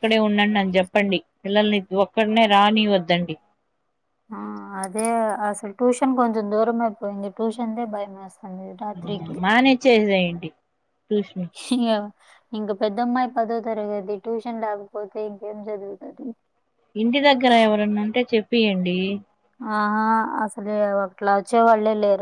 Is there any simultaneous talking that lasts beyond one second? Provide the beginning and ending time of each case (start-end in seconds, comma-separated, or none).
none